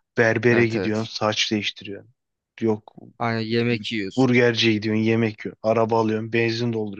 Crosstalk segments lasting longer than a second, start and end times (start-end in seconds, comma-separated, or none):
none